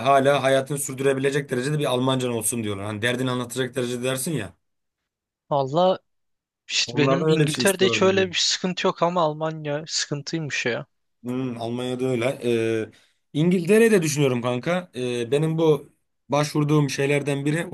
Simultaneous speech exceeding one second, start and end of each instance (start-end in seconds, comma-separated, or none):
6.8-8.2